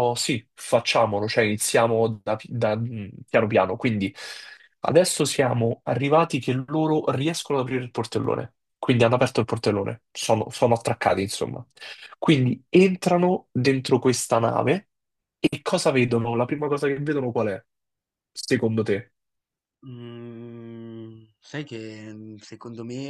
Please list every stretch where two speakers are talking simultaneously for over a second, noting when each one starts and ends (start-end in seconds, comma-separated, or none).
none